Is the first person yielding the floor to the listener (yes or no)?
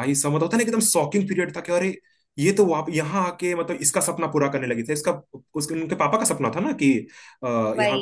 no